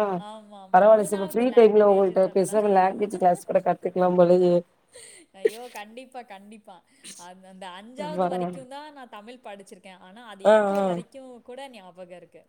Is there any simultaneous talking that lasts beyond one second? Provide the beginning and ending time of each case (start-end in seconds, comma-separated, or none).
0.8-2.6